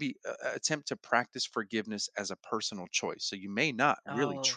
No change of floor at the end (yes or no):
yes